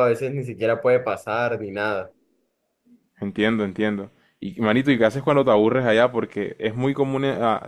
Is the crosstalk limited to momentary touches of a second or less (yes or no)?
yes